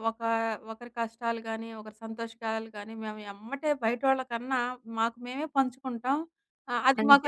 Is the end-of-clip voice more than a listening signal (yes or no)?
no